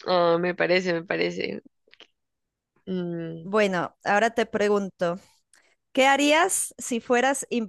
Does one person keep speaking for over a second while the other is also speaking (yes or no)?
no